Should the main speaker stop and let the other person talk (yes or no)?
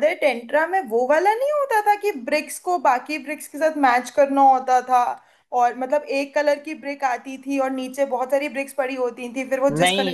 yes